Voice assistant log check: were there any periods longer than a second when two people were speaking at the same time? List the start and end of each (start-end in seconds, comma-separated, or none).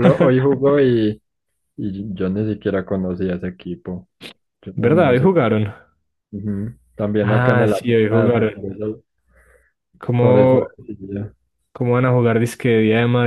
7.2-8.6